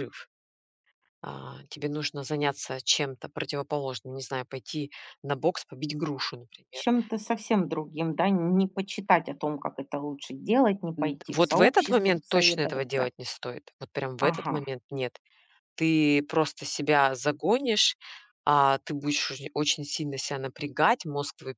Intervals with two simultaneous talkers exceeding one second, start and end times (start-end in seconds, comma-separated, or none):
11.0-13.1